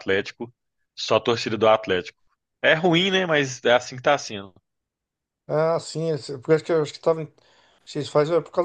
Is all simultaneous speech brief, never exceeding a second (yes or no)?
yes